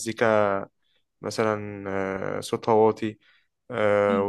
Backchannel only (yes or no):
yes